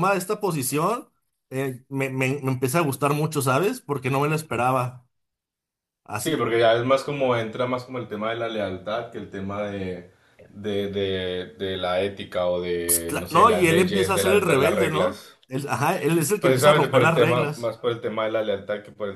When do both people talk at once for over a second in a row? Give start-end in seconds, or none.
12.9-15.4, 16.4-17.8